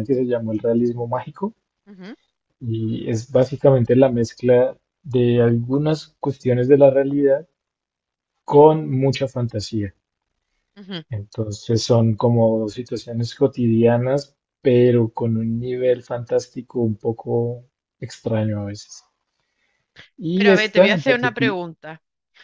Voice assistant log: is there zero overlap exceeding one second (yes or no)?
no